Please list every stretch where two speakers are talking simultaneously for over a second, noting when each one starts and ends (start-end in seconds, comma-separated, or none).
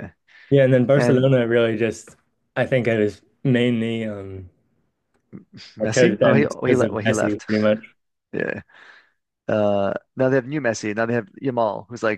5.8-7.5